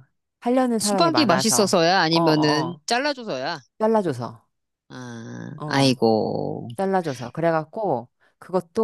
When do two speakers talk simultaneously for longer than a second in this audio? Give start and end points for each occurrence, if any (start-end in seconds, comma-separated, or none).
0.8-2.8